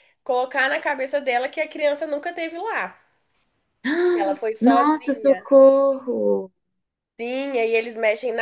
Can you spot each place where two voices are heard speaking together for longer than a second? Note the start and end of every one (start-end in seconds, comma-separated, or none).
4.1-5.5